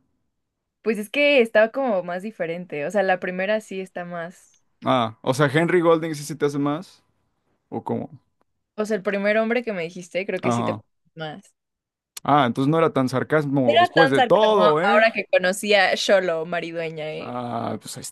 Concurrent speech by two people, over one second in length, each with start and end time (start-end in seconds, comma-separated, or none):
13.6-15.1